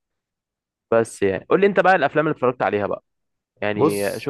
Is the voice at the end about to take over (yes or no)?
no